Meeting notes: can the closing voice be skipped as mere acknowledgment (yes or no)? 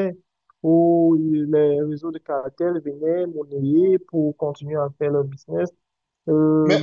yes